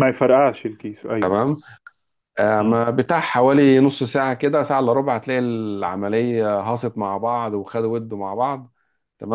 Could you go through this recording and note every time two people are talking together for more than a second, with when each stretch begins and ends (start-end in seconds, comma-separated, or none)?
none